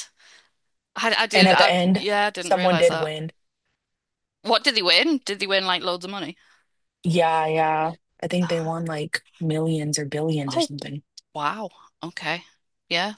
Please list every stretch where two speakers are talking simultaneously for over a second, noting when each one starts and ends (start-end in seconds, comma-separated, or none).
1.3-3.1